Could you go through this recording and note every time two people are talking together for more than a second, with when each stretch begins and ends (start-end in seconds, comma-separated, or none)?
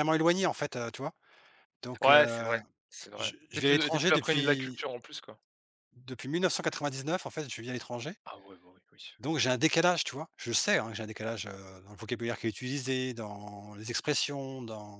3.1-4.8